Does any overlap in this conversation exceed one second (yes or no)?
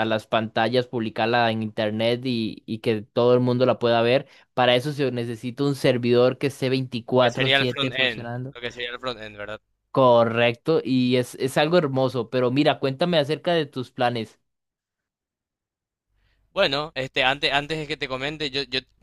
yes